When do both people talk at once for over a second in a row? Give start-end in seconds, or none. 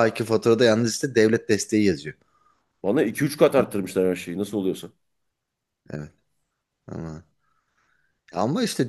none